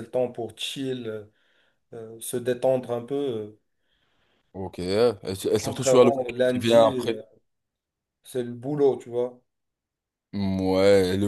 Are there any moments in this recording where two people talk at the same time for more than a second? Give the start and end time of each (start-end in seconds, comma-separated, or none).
5.6-7.2